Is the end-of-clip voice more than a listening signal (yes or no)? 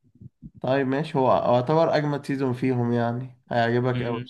yes